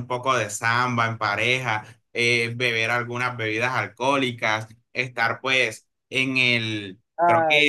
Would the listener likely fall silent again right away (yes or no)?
yes